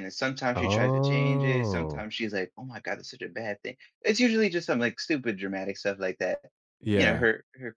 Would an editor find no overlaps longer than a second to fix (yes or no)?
no